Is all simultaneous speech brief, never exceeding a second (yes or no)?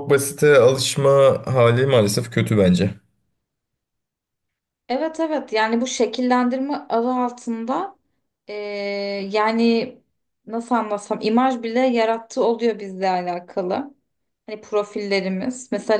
yes